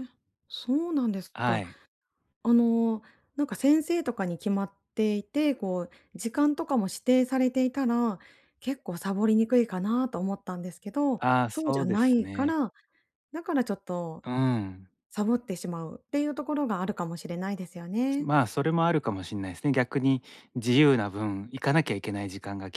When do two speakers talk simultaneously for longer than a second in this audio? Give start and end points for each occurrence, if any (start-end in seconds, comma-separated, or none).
11.2-12.6